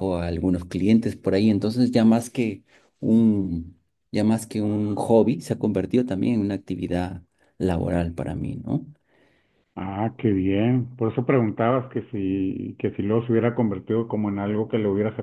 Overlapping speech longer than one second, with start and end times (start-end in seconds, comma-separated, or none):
none